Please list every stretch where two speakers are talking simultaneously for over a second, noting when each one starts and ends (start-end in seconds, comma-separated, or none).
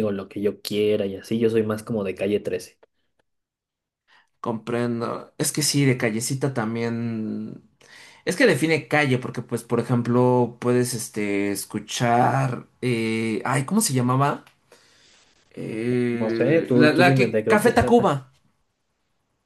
16.2-18.1